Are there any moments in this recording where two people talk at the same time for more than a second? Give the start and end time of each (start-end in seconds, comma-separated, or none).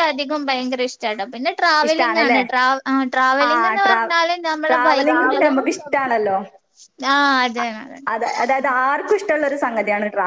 none